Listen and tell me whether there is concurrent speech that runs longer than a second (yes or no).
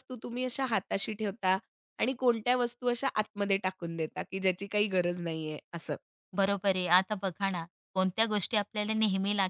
no